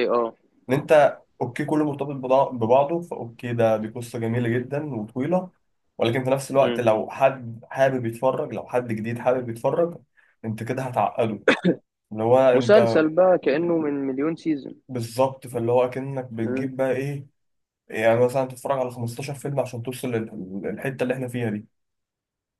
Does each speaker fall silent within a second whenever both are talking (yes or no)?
yes